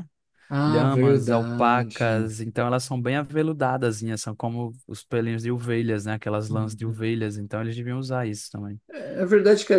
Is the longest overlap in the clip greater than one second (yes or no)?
yes